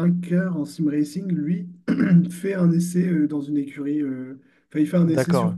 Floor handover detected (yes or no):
no